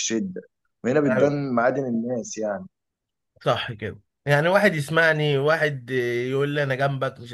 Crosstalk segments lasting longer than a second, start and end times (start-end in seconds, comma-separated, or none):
none